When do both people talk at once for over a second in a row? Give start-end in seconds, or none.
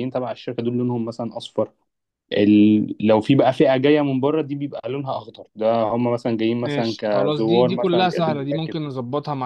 6.6-8.8